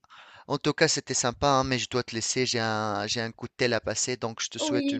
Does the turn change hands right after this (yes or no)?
yes